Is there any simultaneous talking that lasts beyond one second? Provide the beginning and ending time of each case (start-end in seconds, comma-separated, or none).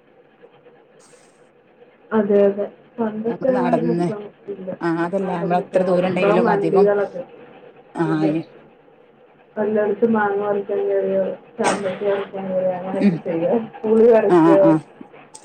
5.2-6.8